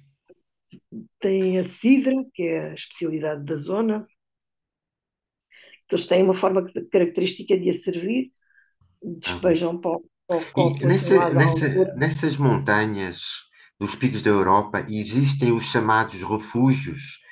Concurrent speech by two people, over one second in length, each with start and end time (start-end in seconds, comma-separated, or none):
10.6-11.9